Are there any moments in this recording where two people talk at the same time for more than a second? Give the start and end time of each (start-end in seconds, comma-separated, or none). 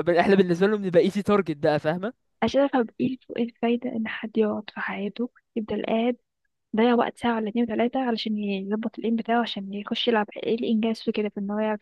none